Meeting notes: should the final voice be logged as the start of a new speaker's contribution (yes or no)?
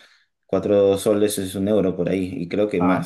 no